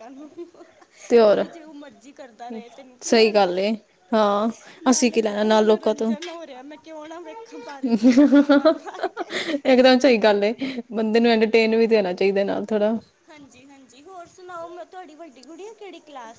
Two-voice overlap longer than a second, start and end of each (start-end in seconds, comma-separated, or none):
4.9-6.1